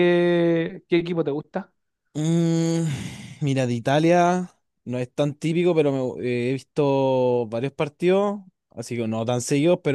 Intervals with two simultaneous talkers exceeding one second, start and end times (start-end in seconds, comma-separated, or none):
none